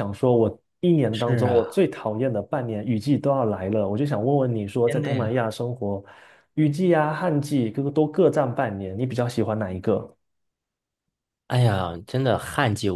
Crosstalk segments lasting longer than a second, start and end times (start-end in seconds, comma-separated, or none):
none